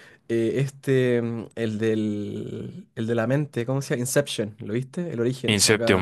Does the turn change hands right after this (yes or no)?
yes